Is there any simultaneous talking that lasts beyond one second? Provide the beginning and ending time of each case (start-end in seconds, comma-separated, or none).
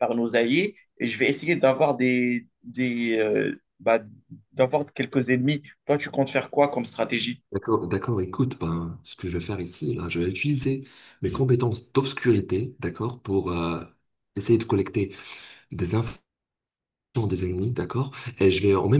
none